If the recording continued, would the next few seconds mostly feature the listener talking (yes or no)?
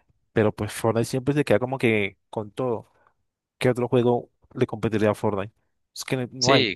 yes